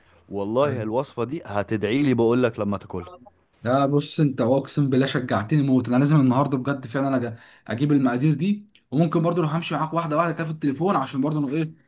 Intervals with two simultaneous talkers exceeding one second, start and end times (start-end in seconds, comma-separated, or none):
none